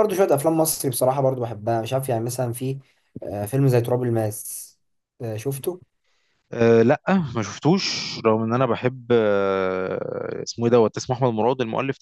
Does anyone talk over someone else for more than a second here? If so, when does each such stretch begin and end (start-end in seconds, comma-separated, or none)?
none